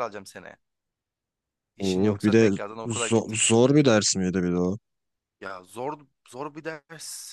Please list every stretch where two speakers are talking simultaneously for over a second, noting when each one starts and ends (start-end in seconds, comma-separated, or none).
1.8-3.3